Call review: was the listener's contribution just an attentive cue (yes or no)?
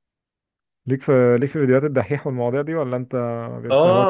no